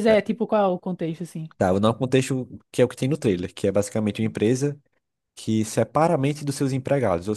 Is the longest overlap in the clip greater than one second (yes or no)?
no